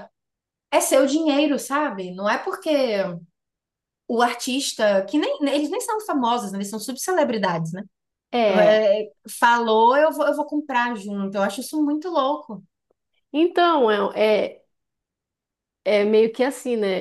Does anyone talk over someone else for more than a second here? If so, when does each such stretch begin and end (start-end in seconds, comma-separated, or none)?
none